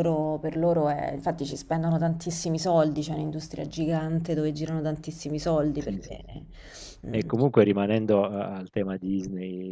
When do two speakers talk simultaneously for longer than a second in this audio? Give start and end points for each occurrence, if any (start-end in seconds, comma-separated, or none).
none